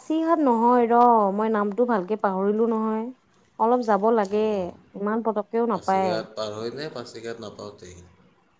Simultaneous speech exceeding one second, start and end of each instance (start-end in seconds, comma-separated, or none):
none